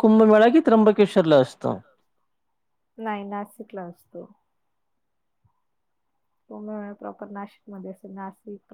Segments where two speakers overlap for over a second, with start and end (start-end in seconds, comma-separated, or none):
none